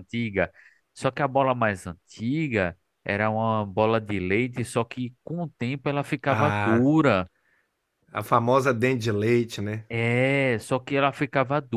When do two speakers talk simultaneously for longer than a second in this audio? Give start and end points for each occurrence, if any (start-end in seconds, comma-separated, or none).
none